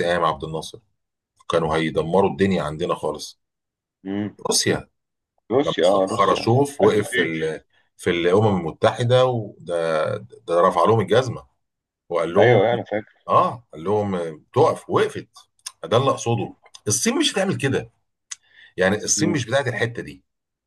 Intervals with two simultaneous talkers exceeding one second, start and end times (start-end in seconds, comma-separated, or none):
5.6-7.4